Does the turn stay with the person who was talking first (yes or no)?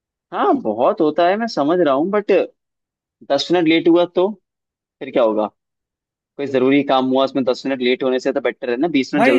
no